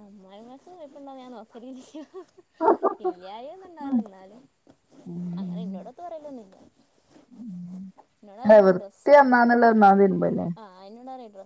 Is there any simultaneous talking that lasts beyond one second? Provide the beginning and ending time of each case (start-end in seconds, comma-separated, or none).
8.4-10.4